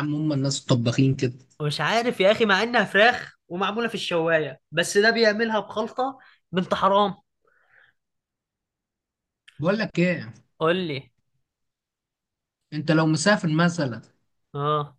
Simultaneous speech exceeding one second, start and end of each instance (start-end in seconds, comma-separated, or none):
none